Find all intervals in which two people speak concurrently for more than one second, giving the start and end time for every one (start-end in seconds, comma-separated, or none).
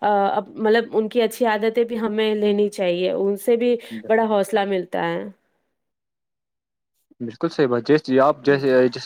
none